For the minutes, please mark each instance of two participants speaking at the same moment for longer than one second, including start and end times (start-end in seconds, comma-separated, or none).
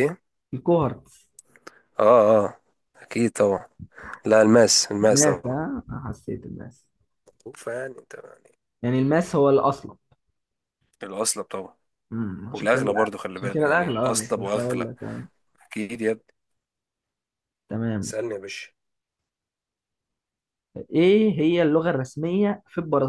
12.5-14.9